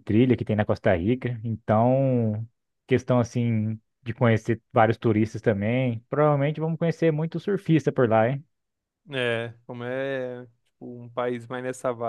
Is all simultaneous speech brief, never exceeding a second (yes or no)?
yes